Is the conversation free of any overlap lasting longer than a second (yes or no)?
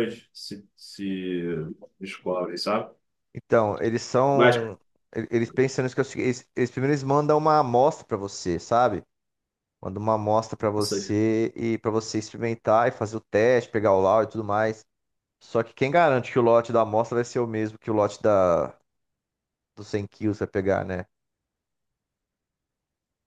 yes